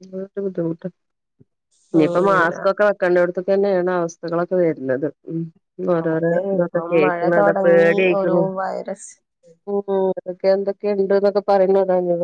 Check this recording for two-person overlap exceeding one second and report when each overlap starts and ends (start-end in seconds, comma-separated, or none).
6.2-8.4